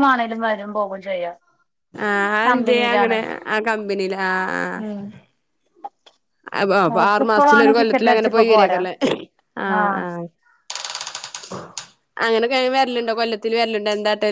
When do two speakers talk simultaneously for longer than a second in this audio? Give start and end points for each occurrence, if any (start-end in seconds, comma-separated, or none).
7.1-8.8